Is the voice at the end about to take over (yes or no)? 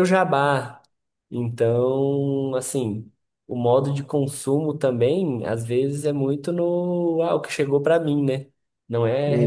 no